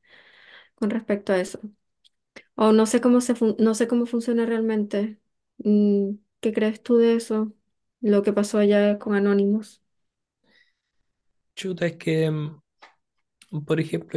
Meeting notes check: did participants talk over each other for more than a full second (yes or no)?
no